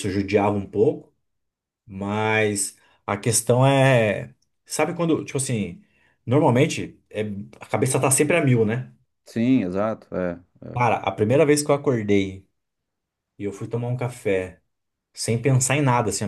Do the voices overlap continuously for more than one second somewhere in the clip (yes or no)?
no